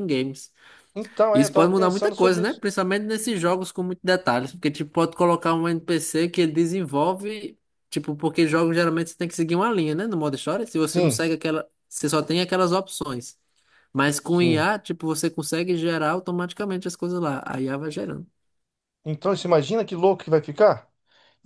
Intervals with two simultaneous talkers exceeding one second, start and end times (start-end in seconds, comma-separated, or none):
1.3-2.6